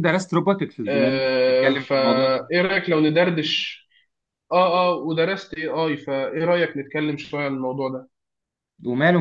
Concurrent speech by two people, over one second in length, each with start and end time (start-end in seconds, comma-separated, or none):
0.9-2.4